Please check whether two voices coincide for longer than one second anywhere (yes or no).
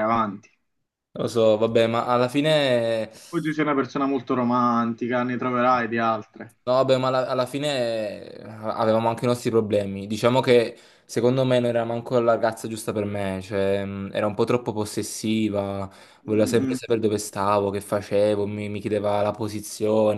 no